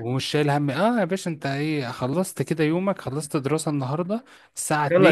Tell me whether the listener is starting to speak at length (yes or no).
no